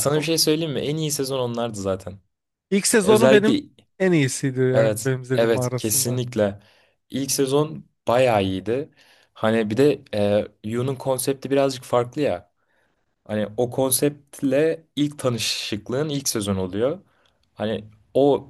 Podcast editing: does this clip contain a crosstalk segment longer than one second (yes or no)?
yes